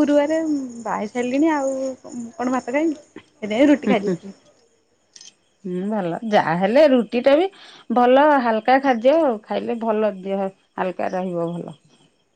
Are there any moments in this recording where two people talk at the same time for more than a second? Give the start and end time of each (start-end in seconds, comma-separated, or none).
none